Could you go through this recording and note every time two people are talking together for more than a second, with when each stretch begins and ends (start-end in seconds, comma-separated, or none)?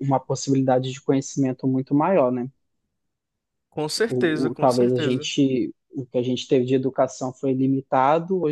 4.1-5.3